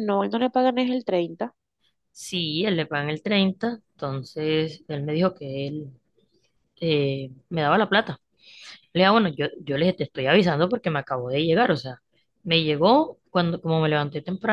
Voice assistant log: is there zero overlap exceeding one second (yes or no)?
yes